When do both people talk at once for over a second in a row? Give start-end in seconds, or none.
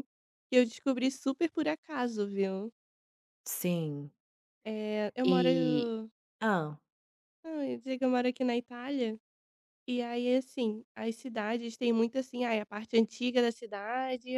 none